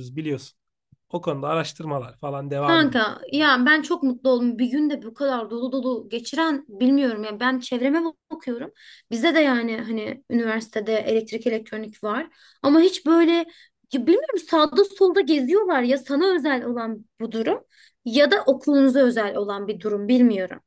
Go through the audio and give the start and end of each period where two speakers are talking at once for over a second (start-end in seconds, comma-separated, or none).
none